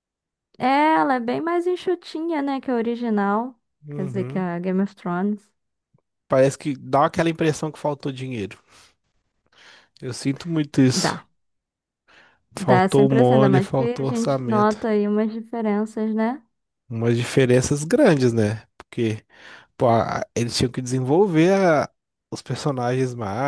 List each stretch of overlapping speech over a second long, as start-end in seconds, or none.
12.6-14.8